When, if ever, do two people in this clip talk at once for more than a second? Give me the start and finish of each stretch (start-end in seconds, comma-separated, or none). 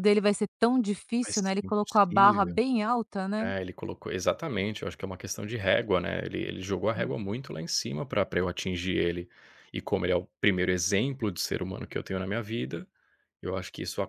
1.2-2.6